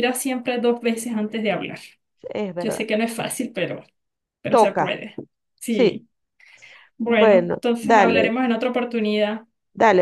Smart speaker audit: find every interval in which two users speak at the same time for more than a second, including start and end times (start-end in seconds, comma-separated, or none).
7.0-8.3